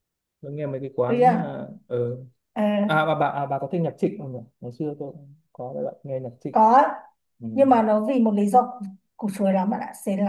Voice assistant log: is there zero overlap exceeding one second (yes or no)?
yes